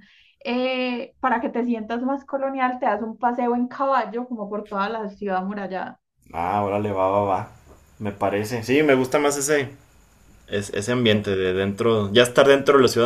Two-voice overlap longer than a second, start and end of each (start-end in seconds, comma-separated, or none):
none